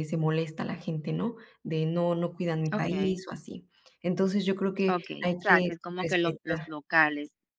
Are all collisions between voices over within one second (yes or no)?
no